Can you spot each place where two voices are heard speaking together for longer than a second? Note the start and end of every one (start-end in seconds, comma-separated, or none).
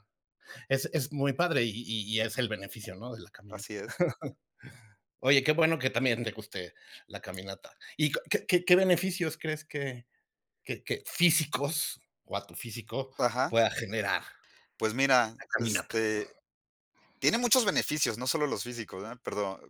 none